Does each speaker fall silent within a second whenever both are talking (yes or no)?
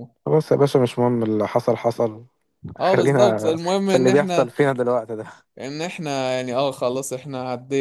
no